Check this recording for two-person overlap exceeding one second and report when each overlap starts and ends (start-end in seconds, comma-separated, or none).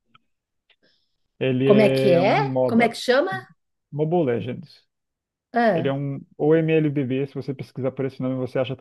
1.6-3.0